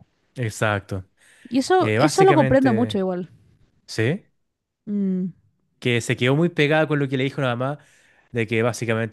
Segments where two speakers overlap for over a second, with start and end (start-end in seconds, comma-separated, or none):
1.8-3.0